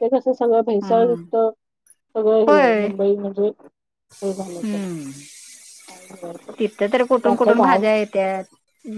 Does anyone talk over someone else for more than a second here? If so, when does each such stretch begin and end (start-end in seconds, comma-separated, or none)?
none